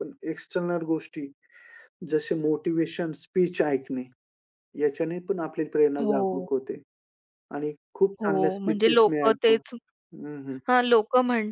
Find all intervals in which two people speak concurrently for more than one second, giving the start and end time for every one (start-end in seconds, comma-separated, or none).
8.2-9.5